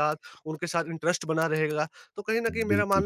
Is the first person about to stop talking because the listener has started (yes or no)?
no